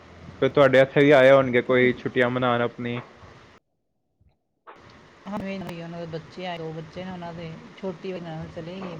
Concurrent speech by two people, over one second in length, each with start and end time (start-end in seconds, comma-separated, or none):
none